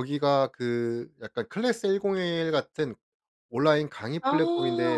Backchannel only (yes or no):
yes